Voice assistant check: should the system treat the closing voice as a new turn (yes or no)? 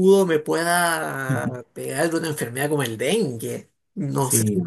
no